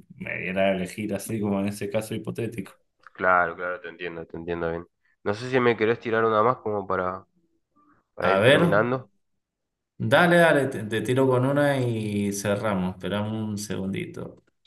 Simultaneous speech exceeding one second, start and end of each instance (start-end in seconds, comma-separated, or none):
none